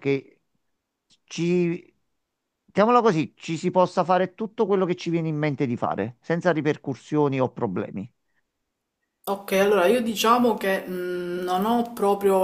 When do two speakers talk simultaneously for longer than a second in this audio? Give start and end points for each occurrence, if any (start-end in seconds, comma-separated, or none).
none